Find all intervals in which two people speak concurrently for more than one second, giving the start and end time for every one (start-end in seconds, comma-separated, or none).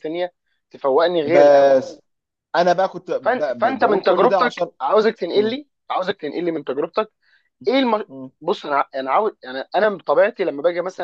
3.2-4.7